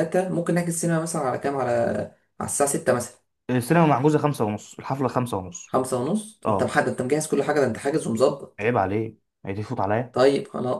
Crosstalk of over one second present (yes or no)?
no